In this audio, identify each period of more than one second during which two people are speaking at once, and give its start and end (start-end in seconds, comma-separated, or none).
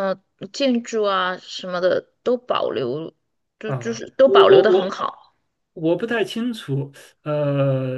3.6-5.1